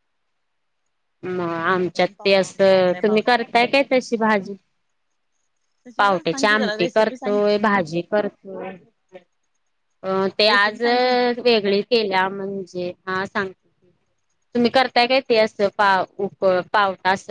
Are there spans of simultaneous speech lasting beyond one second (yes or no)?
yes